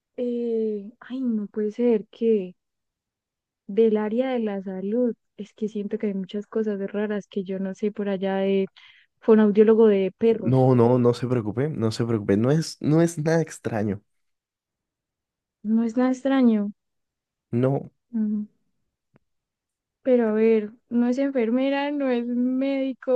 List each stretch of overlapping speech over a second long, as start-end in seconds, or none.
none